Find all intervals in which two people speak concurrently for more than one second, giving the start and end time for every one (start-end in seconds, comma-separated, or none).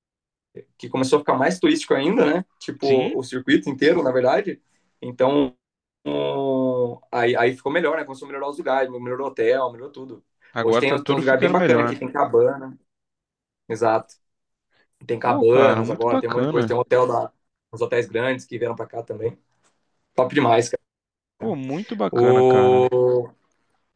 10.6-12.0, 15.2-16.8